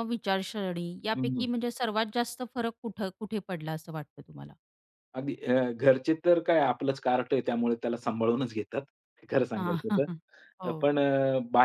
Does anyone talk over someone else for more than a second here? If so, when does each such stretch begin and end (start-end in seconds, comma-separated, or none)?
none